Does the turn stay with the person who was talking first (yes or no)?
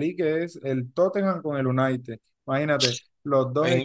yes